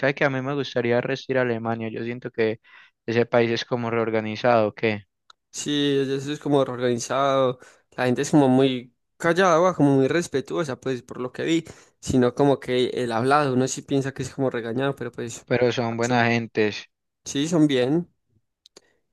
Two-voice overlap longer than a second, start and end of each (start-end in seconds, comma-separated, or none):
none